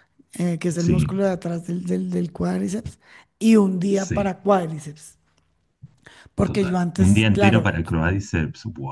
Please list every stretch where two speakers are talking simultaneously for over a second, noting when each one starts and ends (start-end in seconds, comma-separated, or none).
6.4-7.8